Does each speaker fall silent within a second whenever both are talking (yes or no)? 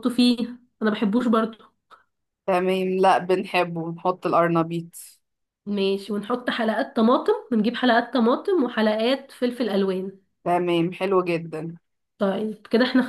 yes